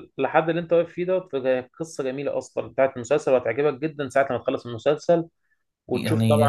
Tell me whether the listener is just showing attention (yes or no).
no